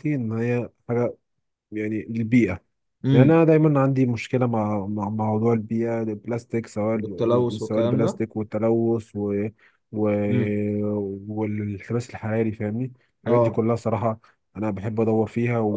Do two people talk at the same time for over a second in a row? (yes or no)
yes